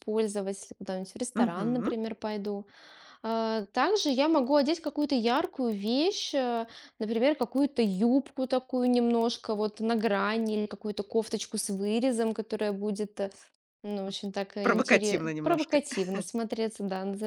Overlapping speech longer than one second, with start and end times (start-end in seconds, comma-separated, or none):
14.6-15.8